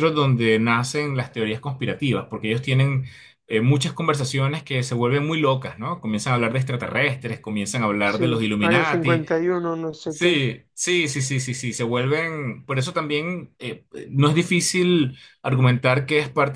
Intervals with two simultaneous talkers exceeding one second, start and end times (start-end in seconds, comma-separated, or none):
8.1-9.2